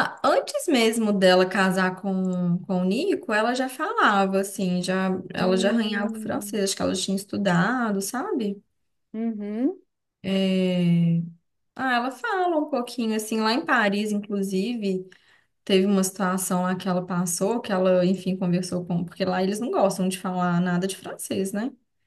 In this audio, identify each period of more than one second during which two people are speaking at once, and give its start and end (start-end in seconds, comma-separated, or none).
5.3-6.6